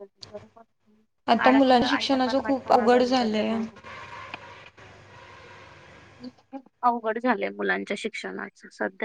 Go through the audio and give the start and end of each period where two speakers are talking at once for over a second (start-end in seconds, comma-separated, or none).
1.5-3.5